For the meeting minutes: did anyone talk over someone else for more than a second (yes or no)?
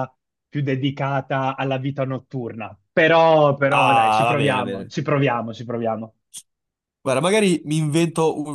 yes